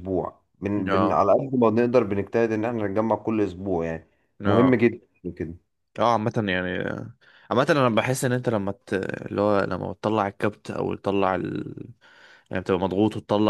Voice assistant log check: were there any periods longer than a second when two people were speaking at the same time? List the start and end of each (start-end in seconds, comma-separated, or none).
none